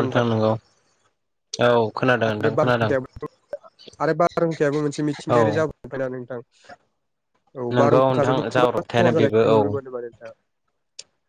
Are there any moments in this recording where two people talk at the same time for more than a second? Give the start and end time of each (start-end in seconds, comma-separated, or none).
7.7-9.6